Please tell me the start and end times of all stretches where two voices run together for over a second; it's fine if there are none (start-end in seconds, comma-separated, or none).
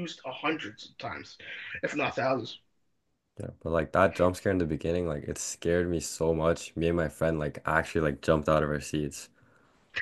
none